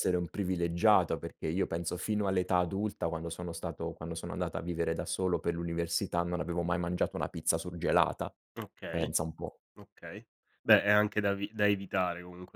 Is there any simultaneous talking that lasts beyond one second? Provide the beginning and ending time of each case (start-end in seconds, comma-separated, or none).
none